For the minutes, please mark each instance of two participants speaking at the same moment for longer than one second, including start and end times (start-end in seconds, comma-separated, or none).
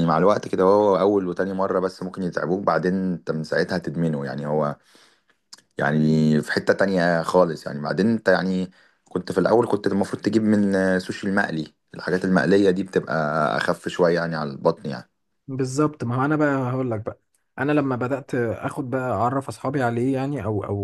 none